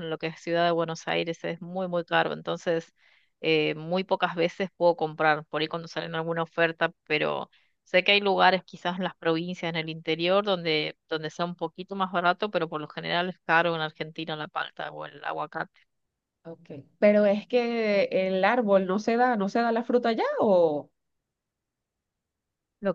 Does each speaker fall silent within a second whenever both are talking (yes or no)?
yes